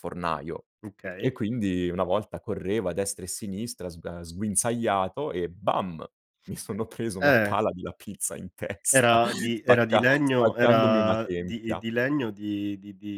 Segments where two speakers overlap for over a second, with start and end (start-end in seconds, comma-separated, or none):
8.9-11.8